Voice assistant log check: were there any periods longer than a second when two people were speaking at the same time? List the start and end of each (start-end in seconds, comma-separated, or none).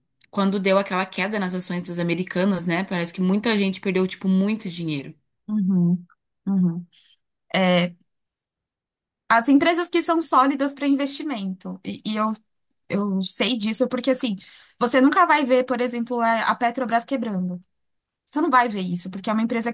none